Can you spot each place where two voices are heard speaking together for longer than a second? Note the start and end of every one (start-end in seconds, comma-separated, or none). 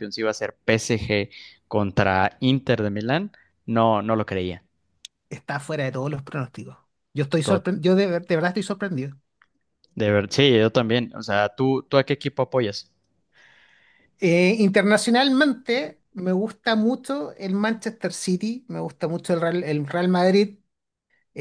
none